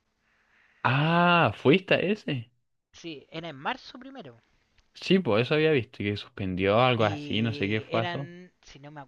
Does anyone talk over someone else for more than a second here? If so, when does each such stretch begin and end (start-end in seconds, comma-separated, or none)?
7.0-8.3